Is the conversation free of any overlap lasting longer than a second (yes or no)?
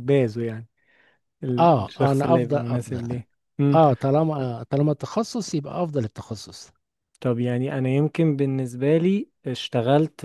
no